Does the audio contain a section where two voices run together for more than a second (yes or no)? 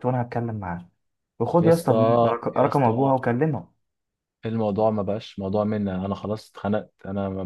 yes